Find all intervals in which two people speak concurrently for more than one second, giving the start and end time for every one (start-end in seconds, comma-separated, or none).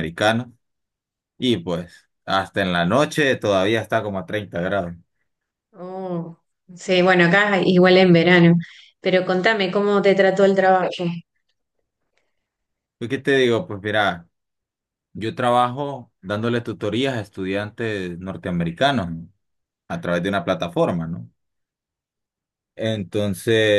none